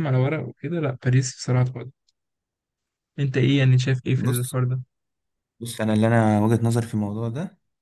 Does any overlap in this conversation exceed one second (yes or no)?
no